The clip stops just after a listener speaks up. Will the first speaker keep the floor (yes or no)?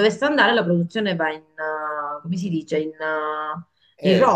no